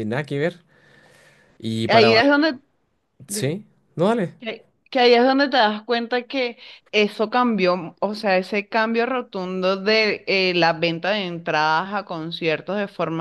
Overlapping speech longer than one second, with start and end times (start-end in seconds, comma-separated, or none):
none